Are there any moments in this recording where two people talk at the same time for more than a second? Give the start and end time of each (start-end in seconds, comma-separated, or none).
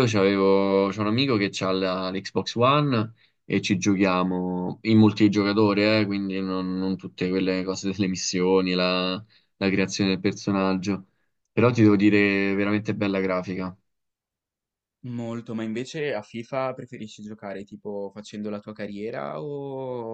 none